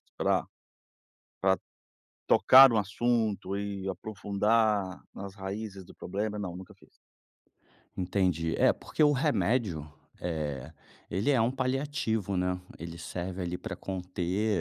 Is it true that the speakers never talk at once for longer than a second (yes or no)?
yes